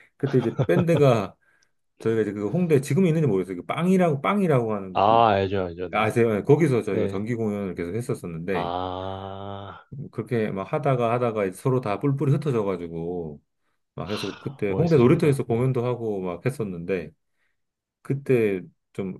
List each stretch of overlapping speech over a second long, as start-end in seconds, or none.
14.0-15.7